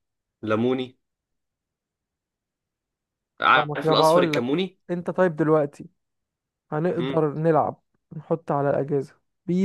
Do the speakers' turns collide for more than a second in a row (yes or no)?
yes